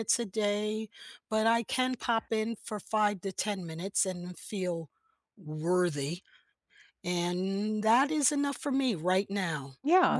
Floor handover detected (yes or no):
yes